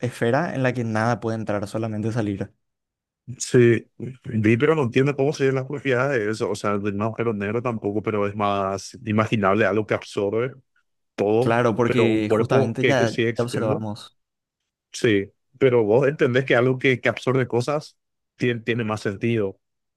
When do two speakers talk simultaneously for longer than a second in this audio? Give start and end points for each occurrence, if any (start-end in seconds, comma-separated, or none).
11.4-13.8